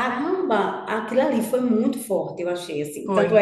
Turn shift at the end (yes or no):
no